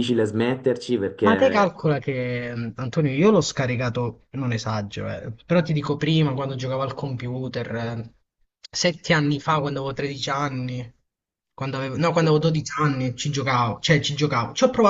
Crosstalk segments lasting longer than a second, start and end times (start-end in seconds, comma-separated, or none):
none